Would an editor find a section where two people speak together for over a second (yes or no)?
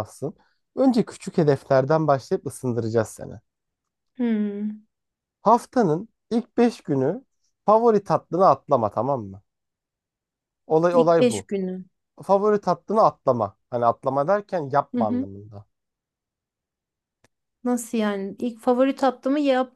no